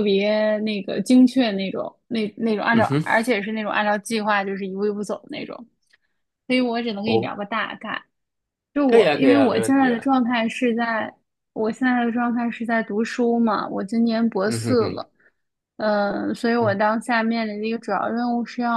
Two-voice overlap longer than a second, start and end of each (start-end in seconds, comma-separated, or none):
8.9-10.1